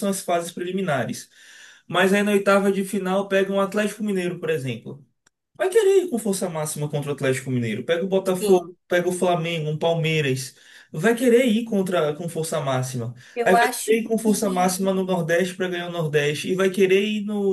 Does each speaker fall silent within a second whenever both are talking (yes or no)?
no